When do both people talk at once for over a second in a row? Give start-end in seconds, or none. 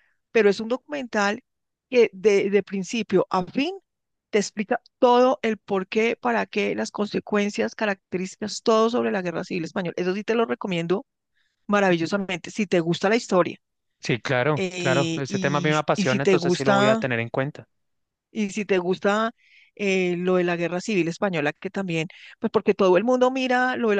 14.6-17.0